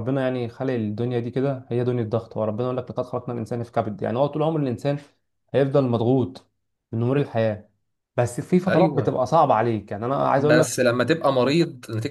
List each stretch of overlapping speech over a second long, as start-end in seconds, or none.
none